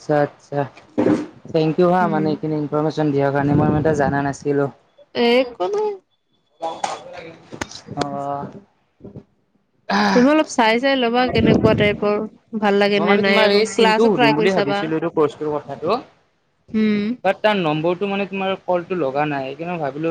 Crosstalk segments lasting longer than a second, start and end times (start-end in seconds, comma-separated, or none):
13.0-14.8